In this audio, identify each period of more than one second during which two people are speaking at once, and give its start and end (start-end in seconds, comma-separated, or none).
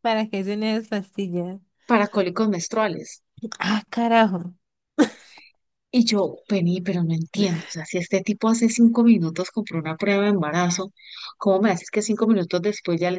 none